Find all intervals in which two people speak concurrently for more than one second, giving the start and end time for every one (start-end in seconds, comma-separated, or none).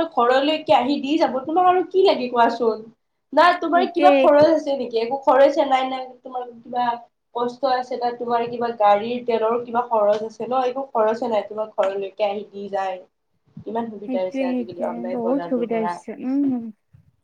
14.0-15.9